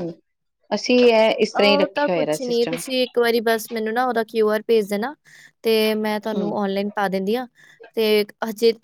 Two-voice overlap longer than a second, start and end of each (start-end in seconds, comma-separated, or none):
1.6-2.8